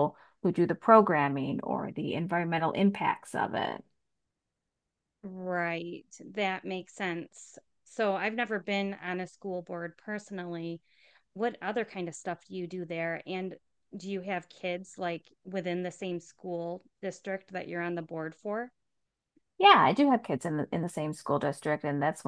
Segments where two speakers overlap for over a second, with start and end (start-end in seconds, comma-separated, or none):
none